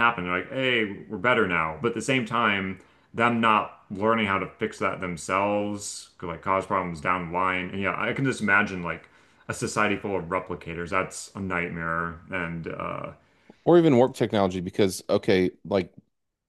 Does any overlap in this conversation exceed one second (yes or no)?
no